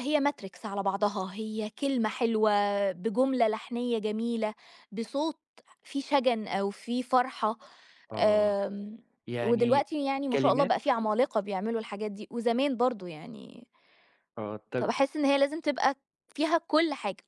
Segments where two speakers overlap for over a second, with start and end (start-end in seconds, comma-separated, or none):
9.4-10.8